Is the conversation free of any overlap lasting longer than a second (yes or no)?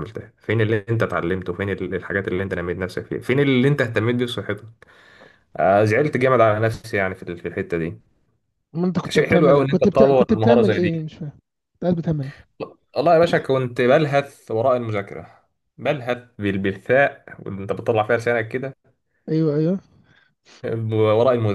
no